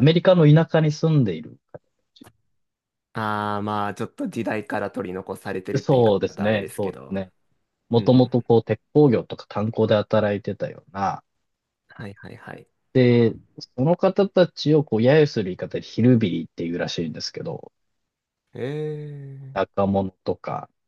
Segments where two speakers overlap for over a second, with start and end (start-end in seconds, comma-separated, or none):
5.8-7.2